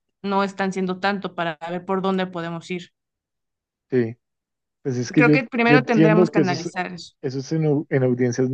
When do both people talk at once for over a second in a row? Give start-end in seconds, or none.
5.2-6.7